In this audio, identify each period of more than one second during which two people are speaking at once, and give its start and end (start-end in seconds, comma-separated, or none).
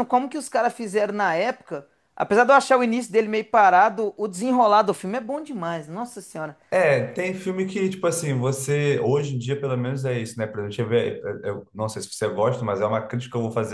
none